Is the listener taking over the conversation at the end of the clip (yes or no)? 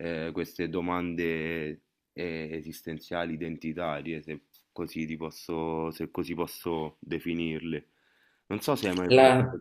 no